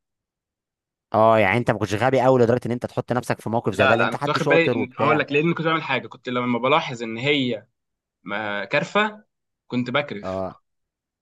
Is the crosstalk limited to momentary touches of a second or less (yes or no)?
no